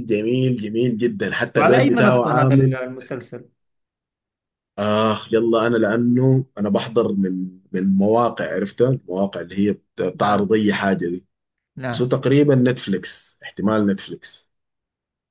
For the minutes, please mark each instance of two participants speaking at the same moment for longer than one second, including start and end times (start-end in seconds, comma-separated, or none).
1.5-2.8